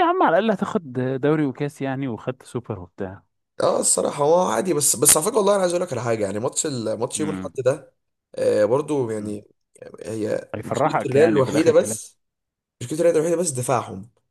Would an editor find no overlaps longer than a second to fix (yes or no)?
no